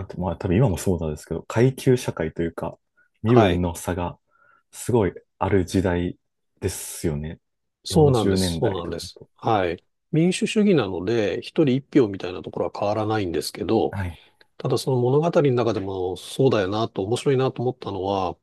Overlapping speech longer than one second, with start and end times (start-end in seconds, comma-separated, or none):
7.9-9.3